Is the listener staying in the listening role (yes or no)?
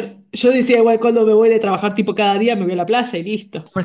no